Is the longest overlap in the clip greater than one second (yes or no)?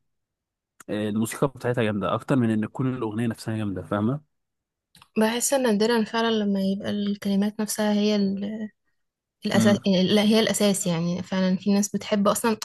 no